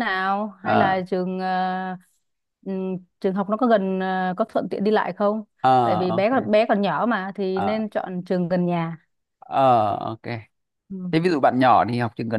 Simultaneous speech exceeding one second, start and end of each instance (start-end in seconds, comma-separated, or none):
none